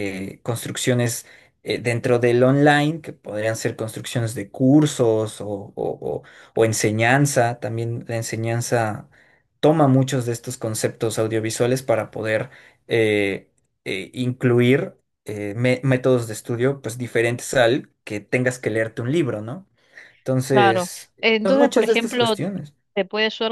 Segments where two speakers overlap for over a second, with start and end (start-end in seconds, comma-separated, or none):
20.5-22.4